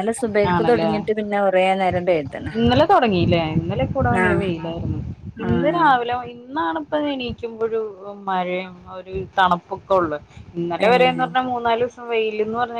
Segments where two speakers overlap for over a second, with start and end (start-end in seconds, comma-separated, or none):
none